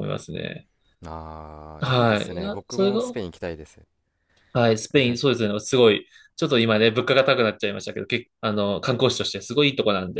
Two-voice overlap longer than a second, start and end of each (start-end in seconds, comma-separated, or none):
1.8-3.0